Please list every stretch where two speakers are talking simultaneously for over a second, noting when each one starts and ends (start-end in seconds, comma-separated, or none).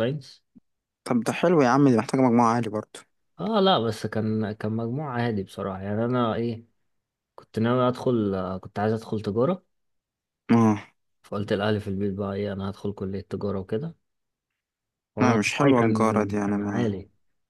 15.2-17.0